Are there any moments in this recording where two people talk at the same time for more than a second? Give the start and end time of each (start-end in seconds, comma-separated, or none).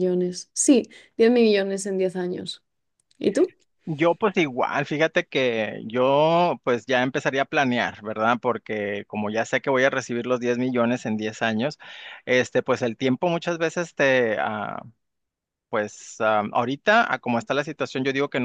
none